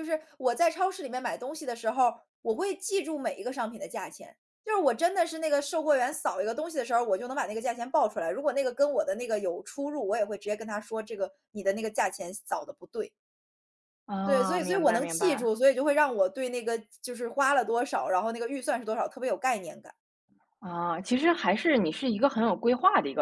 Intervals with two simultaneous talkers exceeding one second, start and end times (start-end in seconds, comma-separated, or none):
14.2-15.5